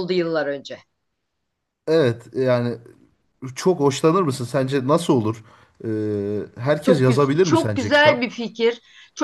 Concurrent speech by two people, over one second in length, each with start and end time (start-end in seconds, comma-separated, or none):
6.8-8.3